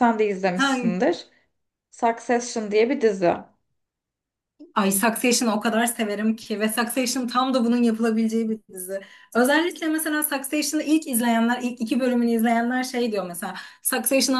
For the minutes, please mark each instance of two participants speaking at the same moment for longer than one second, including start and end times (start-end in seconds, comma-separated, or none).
none